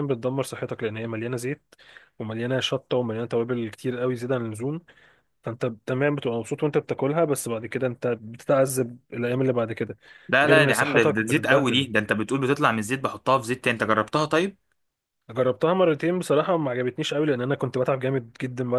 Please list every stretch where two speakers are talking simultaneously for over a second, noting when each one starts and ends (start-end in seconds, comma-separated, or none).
10.4-11.9